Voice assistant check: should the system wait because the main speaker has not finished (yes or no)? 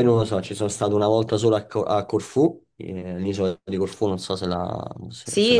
no